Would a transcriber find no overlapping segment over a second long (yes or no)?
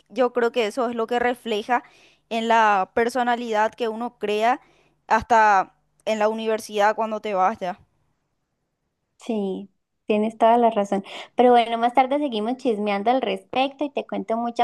yes